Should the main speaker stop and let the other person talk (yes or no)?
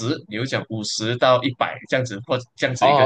yes